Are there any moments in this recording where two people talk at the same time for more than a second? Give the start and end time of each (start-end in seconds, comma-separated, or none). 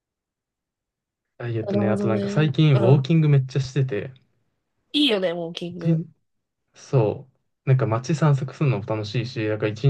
1.6-3.0